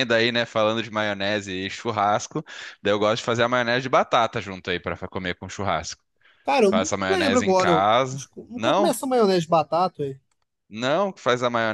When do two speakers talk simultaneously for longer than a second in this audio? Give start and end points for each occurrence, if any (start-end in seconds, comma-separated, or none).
6.7-8.9